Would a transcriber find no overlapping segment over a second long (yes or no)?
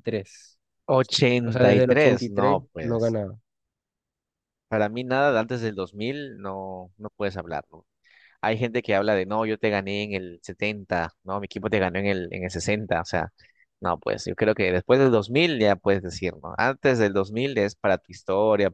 no